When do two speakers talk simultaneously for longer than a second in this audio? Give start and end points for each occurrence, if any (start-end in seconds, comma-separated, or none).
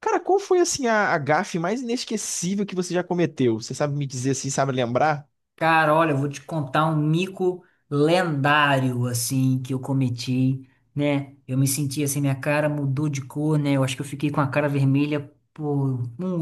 none